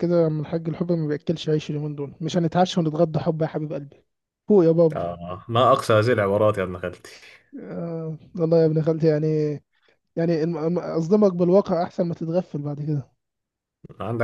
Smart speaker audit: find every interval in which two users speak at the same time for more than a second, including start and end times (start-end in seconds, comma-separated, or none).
none